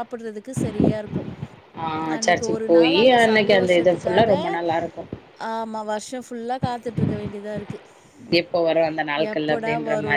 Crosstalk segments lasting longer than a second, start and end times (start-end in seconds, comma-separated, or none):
2.2-4.3